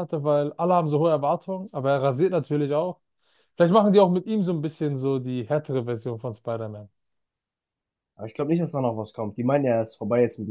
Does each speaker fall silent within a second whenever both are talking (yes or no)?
yes